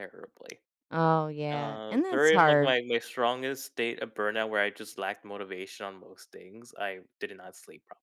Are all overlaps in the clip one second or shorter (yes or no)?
no